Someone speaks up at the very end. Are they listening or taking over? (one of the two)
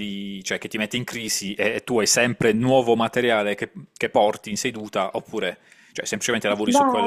taking over